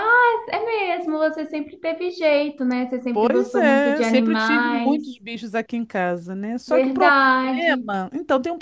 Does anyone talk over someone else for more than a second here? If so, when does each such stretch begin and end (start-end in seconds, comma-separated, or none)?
3.1-5.0, 6.7-7.9